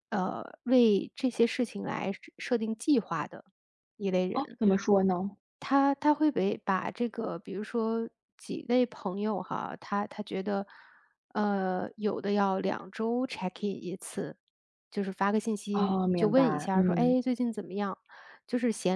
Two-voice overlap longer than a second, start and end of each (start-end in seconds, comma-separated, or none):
15.7-17.1